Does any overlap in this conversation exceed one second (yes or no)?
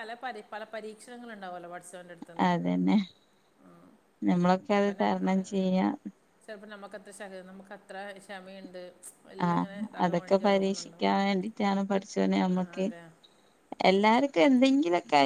yes